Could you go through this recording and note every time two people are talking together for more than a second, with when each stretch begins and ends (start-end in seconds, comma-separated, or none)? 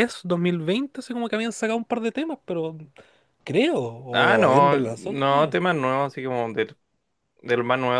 4.1-5.5